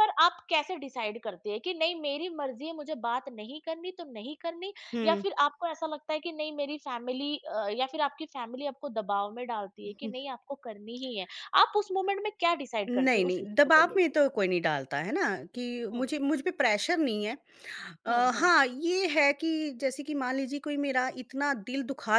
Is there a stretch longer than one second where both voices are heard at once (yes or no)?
yes